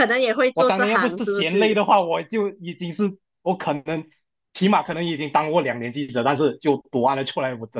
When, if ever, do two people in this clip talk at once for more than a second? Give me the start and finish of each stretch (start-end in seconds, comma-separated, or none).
0.5-1.8